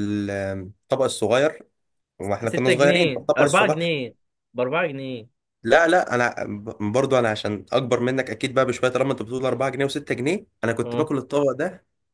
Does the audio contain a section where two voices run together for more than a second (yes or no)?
yes